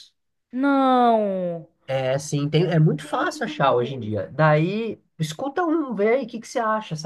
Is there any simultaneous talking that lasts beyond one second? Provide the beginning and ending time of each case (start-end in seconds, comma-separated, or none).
2.5-4.1